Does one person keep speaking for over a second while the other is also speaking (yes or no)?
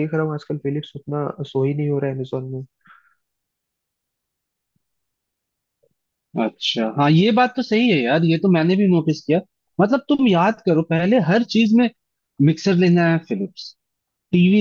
no